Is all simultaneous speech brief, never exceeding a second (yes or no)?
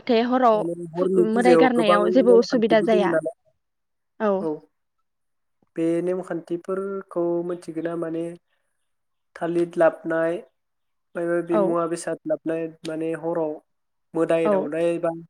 no